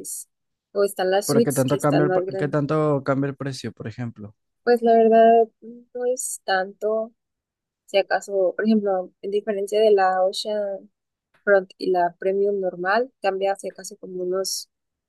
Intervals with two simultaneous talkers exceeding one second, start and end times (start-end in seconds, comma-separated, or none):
1.3-2.6